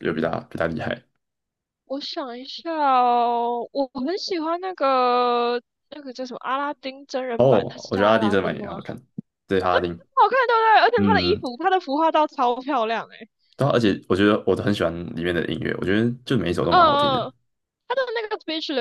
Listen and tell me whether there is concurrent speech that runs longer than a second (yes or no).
yes